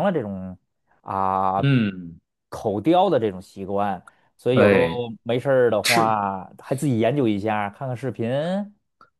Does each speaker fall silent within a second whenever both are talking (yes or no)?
yes